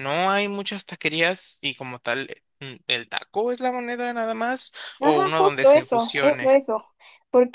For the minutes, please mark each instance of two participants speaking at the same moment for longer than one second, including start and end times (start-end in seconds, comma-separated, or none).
5.0-6.5